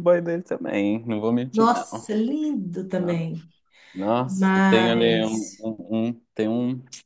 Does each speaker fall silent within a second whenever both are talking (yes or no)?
no